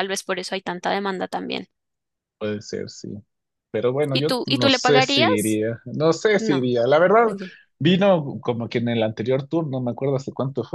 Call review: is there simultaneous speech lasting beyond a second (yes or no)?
yes